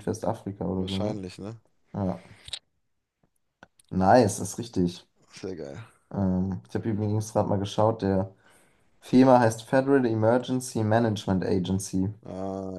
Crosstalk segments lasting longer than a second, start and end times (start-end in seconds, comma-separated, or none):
none